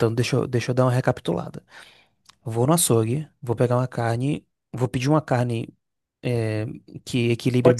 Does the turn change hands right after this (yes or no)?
yes